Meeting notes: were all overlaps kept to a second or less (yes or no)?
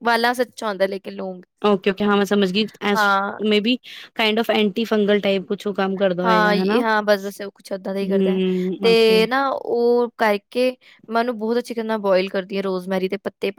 yes